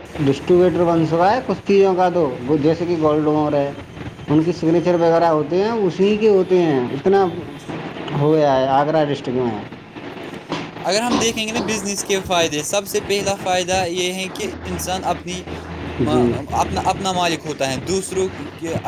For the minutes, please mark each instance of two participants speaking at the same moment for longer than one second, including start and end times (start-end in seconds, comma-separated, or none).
none